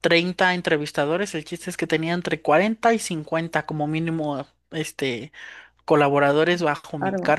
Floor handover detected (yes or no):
no